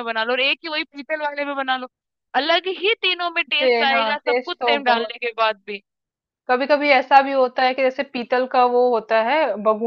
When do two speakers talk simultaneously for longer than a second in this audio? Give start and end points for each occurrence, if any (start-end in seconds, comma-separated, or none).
3.6-5.1